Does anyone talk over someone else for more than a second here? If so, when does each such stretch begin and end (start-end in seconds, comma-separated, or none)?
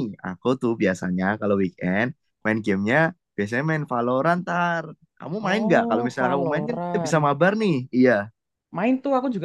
5.4-7.2